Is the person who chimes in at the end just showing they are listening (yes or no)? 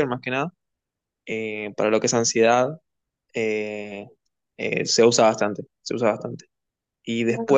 yes